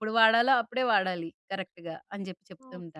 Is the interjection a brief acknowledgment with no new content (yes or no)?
no